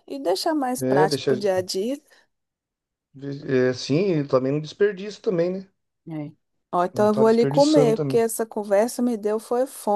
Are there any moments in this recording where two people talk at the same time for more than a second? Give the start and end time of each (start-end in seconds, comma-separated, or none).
6.9-8.3